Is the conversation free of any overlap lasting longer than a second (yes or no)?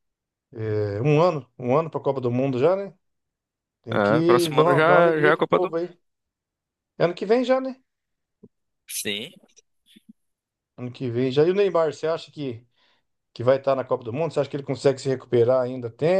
no